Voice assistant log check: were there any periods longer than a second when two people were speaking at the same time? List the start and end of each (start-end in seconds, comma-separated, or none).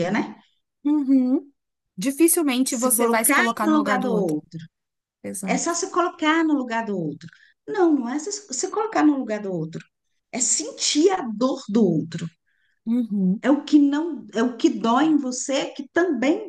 2.8-4.3